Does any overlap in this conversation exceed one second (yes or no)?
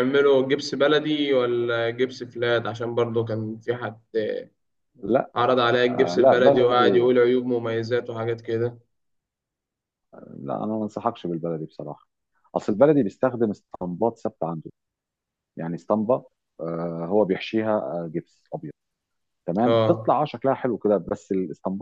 yes